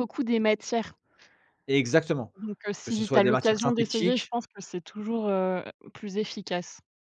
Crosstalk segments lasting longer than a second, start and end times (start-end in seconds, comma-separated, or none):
2.8-4.3